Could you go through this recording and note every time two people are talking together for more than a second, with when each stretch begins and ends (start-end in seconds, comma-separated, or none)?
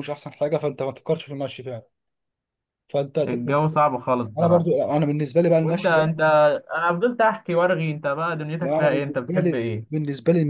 8.6-9.8